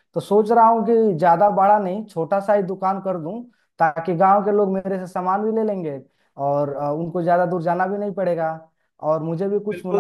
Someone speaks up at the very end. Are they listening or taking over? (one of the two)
taking over